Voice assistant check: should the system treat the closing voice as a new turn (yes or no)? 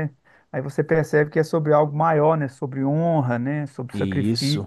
no